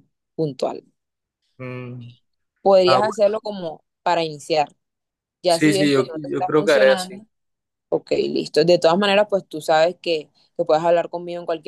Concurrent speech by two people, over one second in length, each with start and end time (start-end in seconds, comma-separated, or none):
5.5-7.2